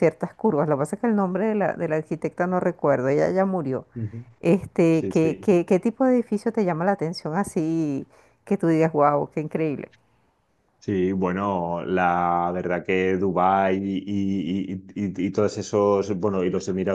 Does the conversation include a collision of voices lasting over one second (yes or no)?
no